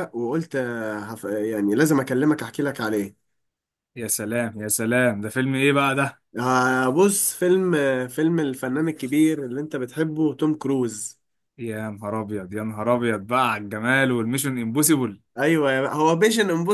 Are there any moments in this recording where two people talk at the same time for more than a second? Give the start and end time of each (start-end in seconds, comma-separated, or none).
none